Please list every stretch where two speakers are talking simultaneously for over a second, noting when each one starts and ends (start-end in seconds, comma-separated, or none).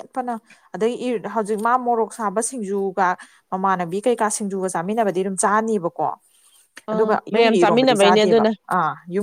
6.9-8.5